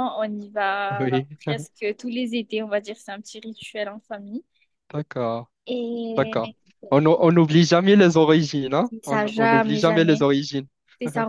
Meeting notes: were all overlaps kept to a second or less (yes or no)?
no